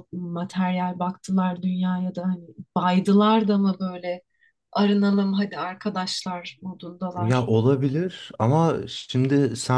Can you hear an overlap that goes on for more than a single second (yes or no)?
no